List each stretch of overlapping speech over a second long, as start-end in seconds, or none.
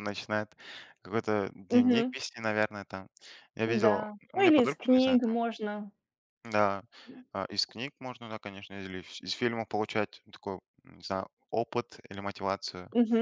3.6-5.4